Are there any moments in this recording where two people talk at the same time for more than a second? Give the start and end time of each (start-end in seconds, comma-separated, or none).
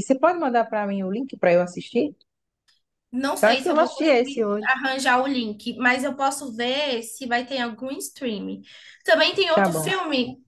3.4-4.7